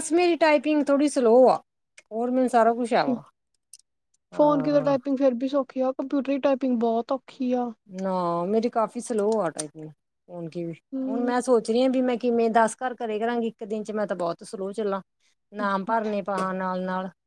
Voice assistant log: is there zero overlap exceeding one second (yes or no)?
yes